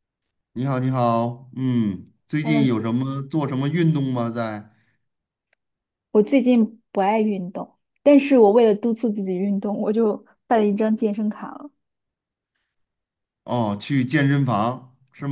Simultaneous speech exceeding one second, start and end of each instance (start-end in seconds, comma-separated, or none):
none